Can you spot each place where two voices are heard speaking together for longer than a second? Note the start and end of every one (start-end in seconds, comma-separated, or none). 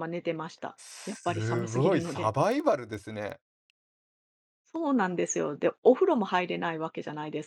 0.8-2.3